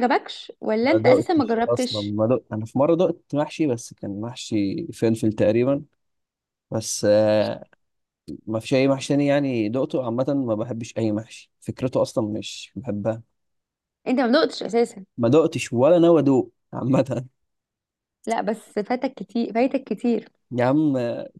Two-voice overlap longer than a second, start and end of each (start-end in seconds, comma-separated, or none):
0.8-2.1